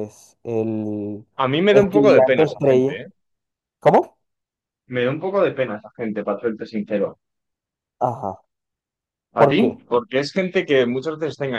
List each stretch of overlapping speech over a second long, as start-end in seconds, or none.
1.7-3.0